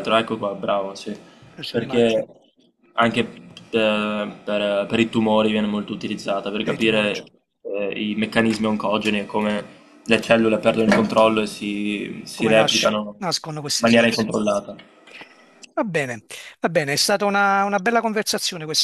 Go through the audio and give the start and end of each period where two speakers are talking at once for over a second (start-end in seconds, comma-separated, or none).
12.3-14.3